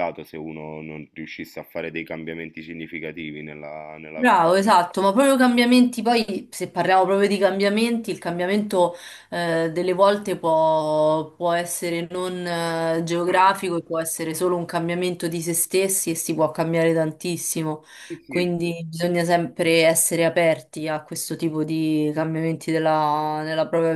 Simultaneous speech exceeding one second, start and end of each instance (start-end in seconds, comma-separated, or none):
none